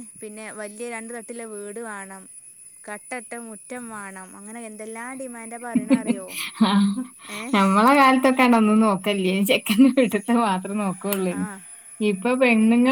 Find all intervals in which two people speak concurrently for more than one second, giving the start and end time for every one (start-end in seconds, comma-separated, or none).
none